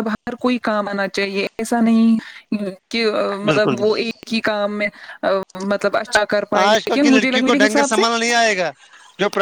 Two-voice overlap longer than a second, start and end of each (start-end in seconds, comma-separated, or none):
6.6-8.0